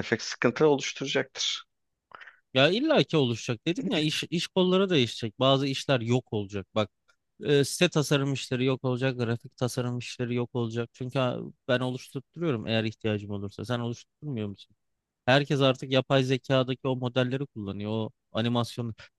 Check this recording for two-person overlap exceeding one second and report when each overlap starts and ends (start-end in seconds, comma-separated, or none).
none